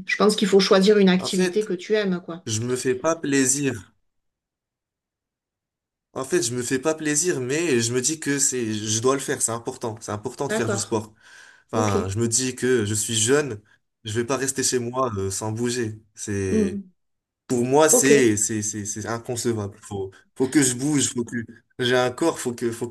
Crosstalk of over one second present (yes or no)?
no